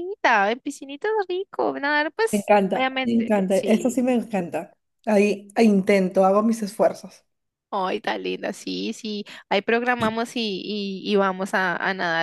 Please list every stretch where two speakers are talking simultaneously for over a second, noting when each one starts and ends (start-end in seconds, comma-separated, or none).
2.3-4.0